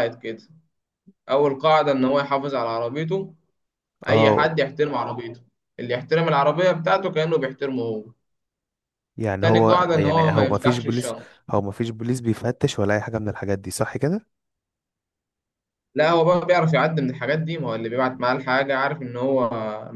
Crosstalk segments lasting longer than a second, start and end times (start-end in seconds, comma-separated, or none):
9.4-11.1